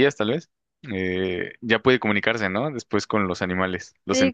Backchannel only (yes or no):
no